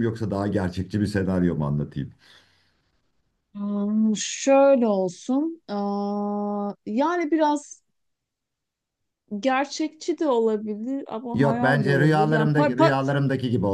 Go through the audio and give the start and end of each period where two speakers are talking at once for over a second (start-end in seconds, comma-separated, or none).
11.3-12.7